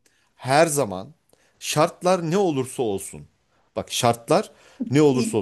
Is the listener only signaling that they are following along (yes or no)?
yes